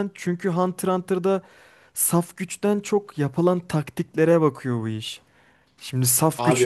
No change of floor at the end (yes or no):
yes